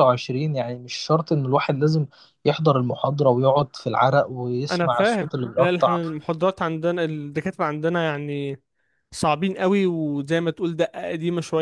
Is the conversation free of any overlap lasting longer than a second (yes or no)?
no